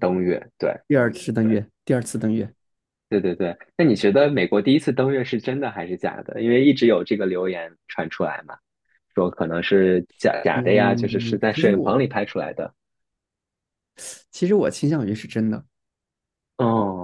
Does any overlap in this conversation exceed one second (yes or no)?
yes